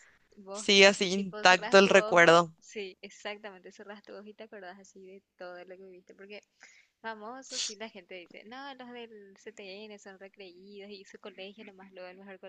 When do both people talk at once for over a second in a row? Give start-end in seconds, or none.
0.5-2.5